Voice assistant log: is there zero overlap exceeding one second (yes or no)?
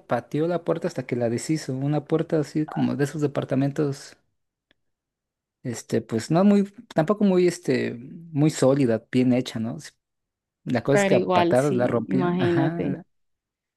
no